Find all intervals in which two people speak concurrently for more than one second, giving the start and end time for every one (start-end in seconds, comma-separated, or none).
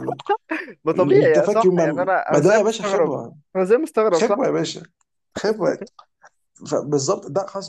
1.1-3.1